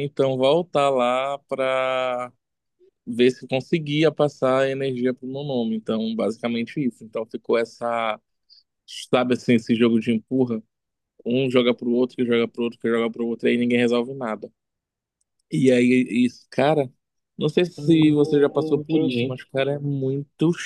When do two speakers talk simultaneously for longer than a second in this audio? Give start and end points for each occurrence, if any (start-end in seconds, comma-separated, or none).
17.8-19.4